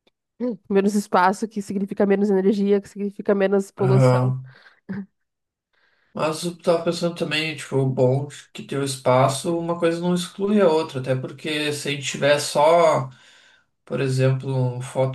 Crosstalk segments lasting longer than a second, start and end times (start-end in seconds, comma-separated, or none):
none